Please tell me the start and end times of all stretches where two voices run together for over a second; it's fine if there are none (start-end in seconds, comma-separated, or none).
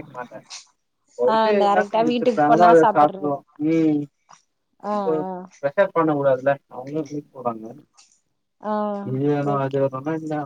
1.3-3.4